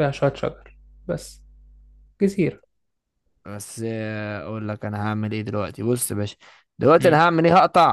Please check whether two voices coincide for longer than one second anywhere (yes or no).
no